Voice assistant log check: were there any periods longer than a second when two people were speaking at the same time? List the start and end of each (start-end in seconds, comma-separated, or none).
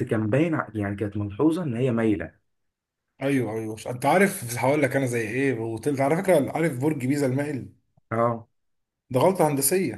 none